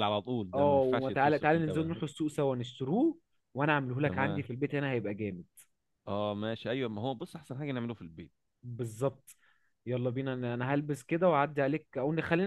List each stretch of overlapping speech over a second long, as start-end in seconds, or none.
0.5-2.0